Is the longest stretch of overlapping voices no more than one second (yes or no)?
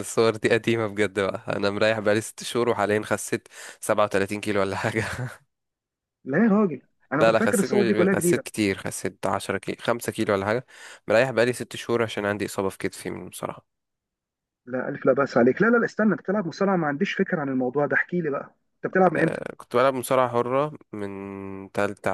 no